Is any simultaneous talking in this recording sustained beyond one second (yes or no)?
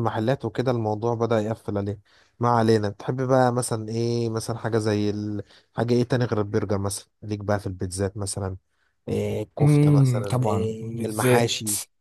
yes